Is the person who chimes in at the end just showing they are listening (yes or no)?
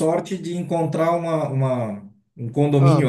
yes